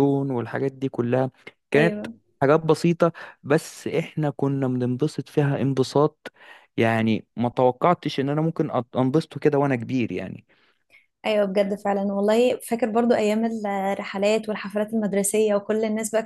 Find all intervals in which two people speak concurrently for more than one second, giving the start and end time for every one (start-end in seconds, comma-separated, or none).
none